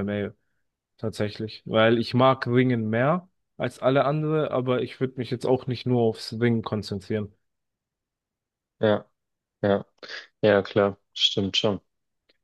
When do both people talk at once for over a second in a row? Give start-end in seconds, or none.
none